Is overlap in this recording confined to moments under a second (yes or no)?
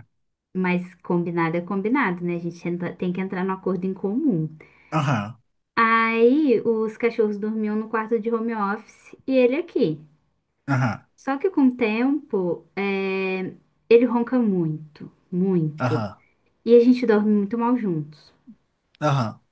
yes